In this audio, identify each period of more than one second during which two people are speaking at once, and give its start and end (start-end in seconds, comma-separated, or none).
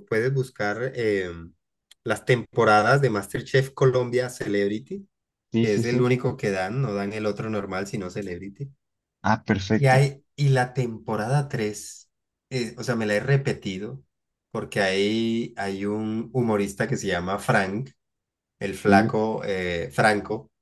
none